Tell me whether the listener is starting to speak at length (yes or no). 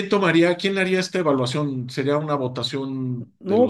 no